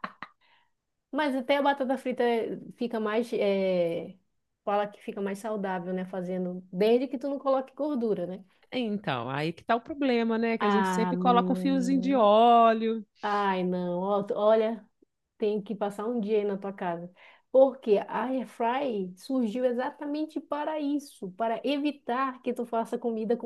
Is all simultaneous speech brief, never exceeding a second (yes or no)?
no